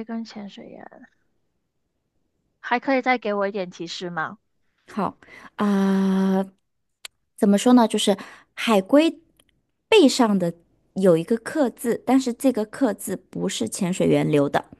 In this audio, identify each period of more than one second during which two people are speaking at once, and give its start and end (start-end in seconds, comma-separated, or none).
none